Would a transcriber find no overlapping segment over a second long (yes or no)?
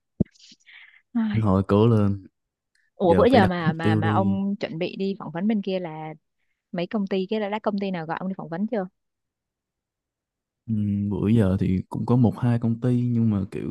no